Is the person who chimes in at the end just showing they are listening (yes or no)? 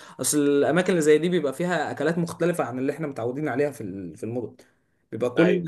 yes